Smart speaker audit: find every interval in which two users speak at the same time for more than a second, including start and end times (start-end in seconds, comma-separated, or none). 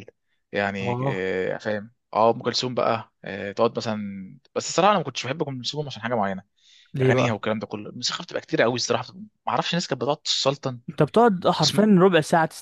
none